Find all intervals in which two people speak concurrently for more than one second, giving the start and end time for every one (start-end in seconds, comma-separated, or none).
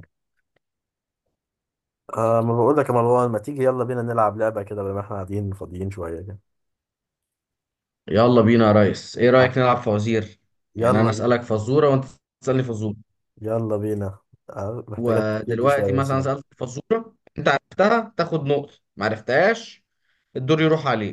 15.0-16.3